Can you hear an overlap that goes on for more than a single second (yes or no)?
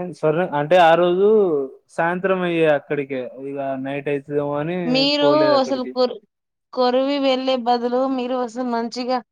no